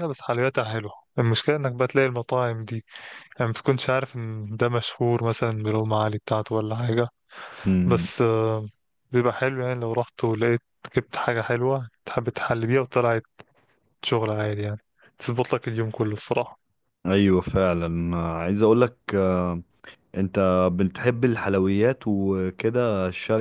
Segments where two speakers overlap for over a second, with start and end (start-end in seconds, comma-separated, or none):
none